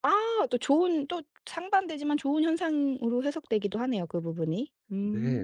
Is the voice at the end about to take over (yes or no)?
yes